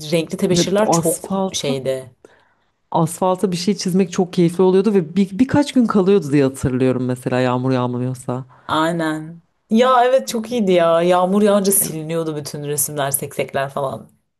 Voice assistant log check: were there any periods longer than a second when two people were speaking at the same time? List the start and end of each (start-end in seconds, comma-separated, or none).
0.5-1.8